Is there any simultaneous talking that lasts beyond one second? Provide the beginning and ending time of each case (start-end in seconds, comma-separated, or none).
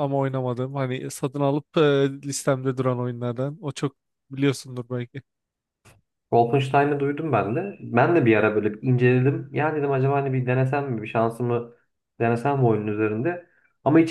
none